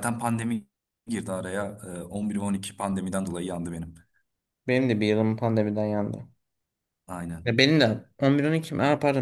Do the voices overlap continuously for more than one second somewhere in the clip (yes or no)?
no